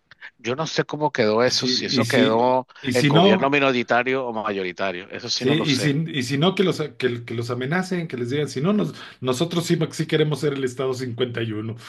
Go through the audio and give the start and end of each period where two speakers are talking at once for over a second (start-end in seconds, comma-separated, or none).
1.4-3.5